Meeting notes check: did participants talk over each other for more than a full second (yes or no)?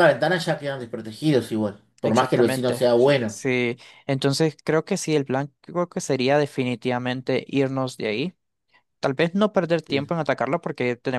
yes